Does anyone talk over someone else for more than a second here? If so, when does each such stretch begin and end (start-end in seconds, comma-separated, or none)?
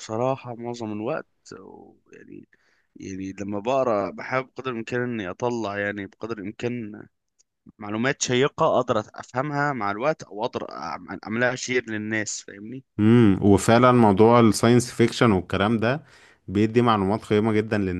none